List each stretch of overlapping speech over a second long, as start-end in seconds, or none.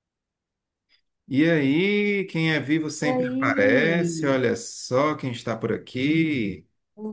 3.0-4.4